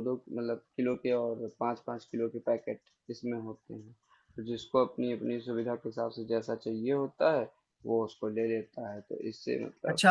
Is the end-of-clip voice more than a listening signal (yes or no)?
yes